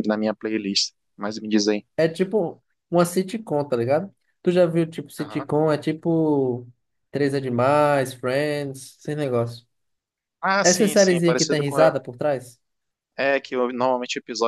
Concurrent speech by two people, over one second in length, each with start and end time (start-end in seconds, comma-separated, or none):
10.6-12.0